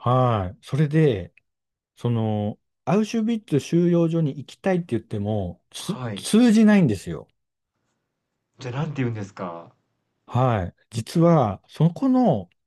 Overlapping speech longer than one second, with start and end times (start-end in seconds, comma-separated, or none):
none